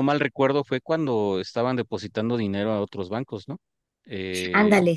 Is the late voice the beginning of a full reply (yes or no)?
no